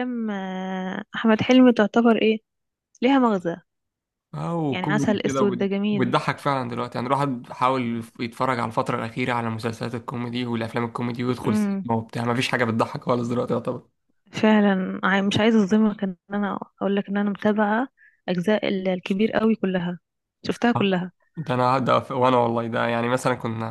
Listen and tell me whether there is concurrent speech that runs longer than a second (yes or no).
yes